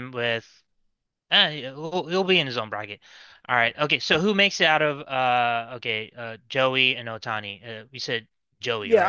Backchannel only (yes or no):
no